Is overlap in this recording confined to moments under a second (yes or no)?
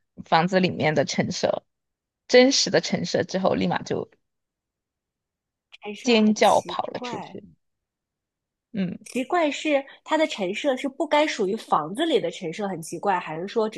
no